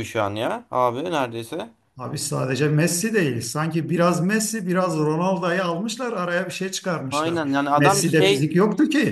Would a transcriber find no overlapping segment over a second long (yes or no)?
no